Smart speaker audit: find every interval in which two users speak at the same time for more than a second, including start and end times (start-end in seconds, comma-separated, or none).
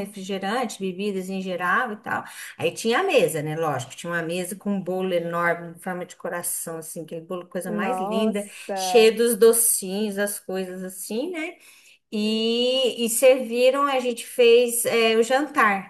7.7-9.2